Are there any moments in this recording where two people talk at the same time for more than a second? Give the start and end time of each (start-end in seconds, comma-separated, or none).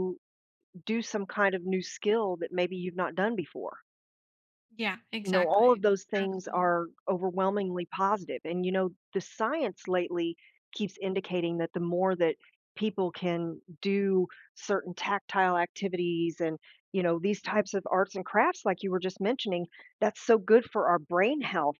5.2-6.8